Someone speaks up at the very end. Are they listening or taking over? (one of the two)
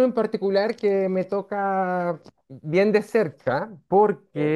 listening